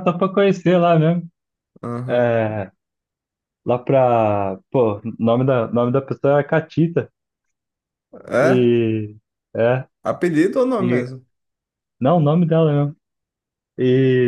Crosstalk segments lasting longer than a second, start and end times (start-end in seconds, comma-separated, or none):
none